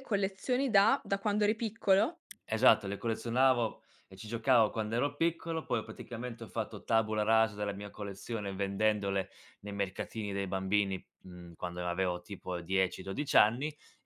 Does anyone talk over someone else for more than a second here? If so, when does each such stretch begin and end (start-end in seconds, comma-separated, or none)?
none